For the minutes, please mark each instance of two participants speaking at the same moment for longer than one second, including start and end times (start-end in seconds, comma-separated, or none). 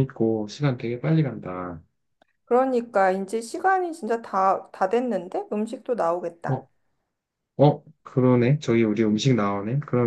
none